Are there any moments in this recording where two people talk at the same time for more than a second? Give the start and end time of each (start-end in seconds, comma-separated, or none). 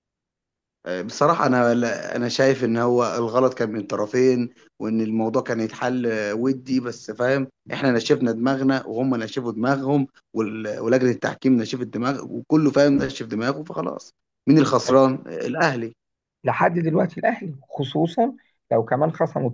none